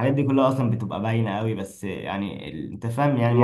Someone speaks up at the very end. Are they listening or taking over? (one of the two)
listening